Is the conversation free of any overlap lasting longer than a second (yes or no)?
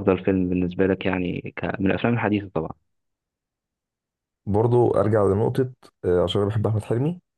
yes